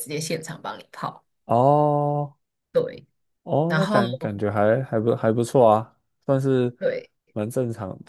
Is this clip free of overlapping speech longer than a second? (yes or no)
yes